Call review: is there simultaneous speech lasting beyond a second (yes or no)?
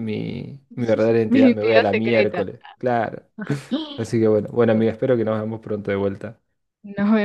yes